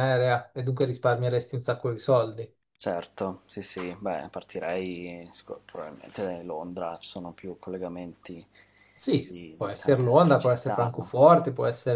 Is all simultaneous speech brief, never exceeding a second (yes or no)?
no